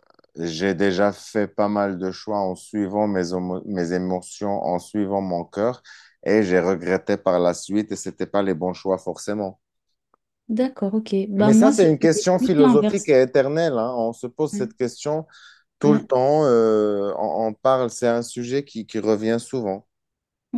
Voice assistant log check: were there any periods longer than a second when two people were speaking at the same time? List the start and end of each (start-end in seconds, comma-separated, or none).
11.4-13.2